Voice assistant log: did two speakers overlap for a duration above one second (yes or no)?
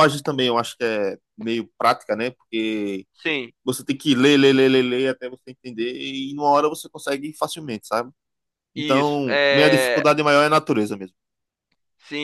yes